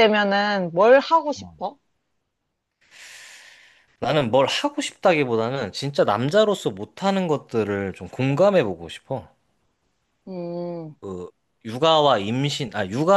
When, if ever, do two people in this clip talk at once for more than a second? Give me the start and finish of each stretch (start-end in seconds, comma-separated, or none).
none